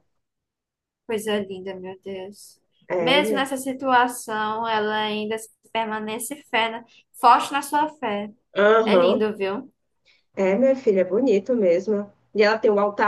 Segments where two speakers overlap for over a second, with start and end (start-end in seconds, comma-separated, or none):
none